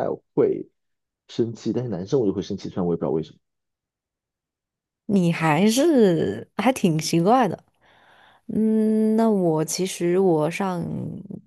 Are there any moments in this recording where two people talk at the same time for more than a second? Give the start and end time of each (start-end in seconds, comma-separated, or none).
none